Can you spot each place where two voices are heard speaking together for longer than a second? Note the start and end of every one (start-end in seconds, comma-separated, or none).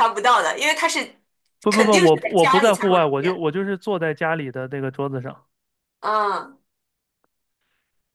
1.7-3.4